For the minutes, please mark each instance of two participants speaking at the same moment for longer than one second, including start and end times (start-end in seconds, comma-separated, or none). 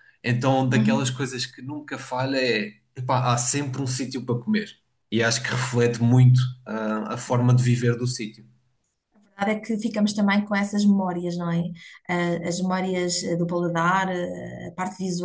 none